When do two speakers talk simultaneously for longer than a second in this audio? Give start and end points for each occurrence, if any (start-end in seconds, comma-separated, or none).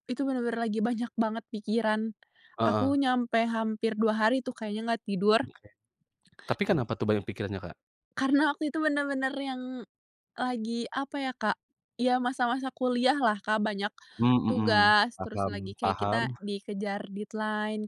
14.5-16.2